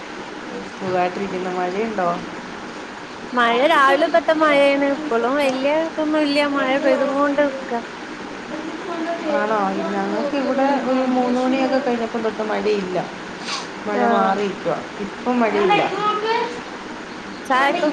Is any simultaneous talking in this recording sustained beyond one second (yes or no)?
no